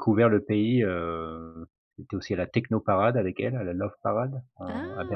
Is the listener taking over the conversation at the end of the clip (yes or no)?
yes